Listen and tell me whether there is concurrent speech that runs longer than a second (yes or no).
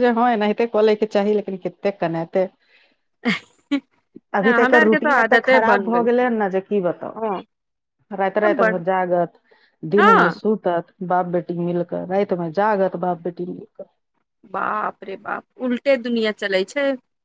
yes